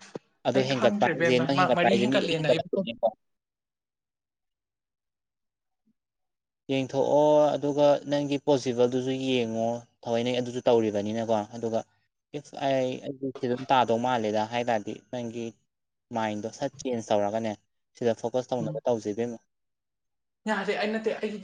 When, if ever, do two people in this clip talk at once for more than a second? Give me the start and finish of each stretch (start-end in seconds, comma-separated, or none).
0.6-2.9